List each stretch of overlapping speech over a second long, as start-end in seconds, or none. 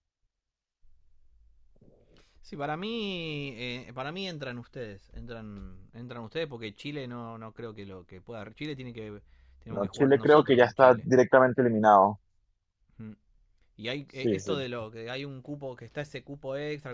9.7-11.1